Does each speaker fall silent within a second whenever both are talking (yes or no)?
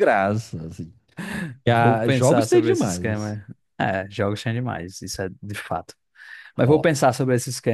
no